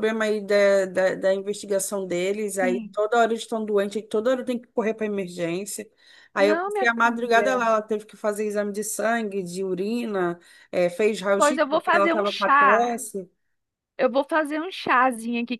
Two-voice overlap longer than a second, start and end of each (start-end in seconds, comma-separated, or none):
6.4-7.7, 11.4-13.0